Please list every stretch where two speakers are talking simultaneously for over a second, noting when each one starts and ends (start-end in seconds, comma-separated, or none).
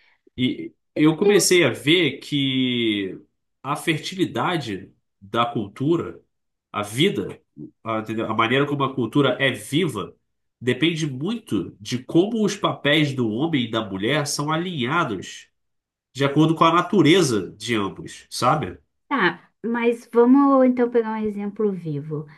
none